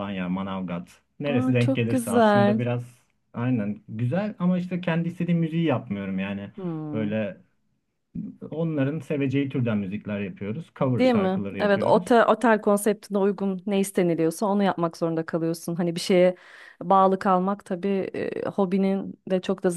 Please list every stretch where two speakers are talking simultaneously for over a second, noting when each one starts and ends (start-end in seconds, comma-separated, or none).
1.3-2.6, 11.0-12.3